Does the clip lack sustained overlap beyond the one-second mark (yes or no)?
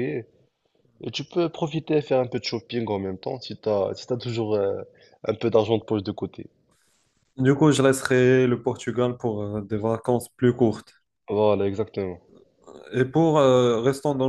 yes